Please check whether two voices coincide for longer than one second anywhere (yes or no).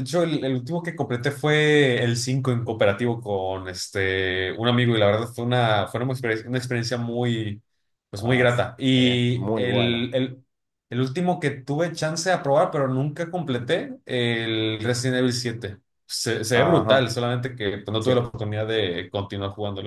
yes